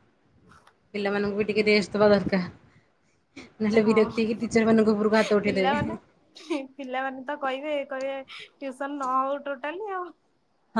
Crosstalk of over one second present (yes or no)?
no